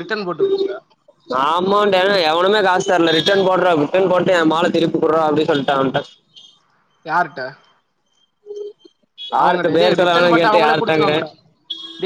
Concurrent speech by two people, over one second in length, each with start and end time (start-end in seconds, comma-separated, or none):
9.4-11.2